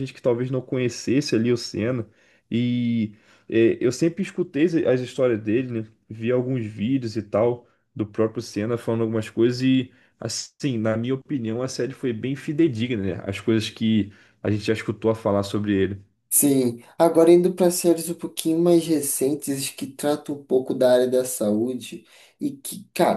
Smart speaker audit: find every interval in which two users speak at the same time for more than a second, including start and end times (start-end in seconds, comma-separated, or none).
none